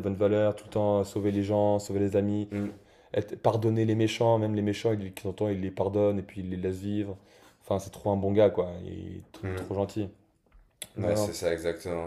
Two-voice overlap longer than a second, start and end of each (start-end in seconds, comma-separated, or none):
none